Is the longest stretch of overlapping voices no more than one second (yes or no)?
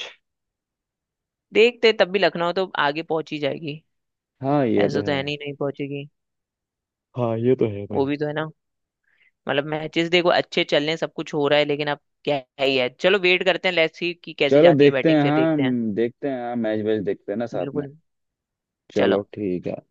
no